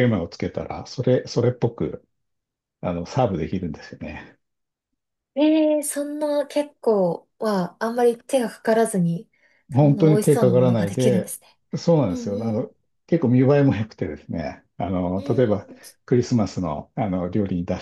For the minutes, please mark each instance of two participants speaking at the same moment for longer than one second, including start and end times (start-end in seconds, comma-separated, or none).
9.7-11.3